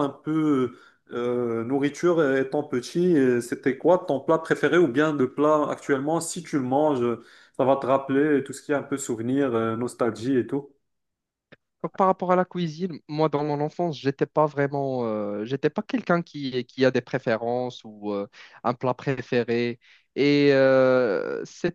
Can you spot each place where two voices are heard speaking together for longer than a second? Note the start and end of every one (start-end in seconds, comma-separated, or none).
none